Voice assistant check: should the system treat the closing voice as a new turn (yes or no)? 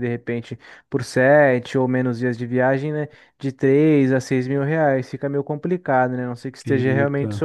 no